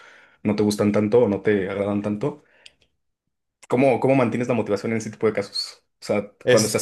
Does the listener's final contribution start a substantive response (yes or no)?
no